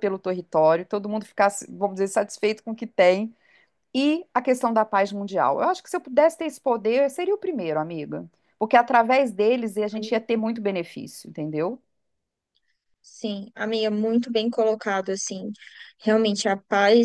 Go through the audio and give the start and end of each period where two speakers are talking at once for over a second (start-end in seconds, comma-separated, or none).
none